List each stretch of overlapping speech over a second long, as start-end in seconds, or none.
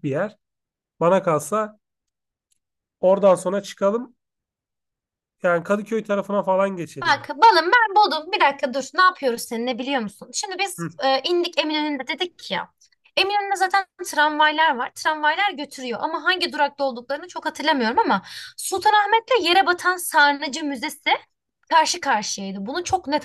none